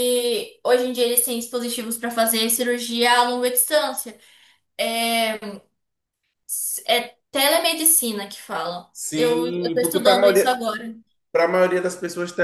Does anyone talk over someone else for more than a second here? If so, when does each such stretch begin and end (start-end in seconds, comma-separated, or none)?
8.9-10.6